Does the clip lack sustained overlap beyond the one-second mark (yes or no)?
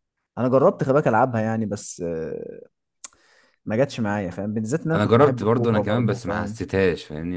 no